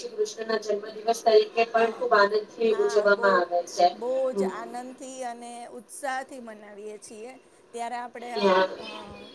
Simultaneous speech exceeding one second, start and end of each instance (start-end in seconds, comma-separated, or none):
none